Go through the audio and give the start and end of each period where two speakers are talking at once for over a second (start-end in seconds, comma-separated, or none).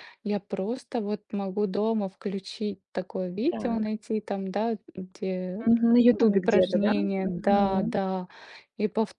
6.2-7.9